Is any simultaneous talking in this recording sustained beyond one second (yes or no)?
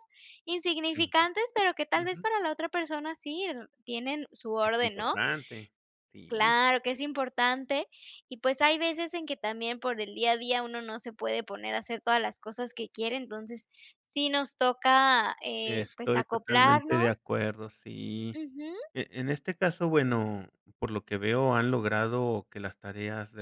yes